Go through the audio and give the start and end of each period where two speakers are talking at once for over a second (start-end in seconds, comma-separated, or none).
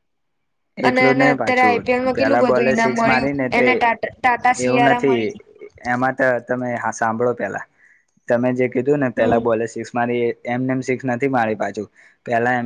0.9-3.7